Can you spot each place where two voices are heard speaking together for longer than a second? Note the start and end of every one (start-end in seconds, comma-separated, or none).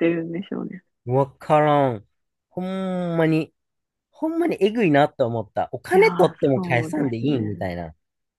5.9-7.7